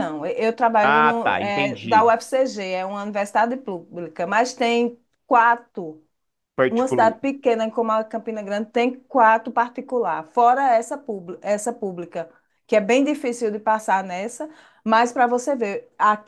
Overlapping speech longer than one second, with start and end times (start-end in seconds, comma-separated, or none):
0.8-2.1